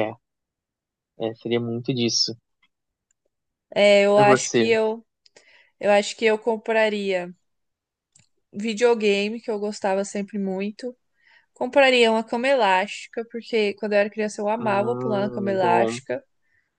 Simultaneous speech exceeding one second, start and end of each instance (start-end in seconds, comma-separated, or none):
14.6-16.0